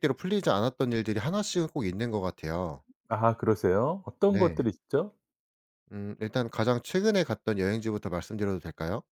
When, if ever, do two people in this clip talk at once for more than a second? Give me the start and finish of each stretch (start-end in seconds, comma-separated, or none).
none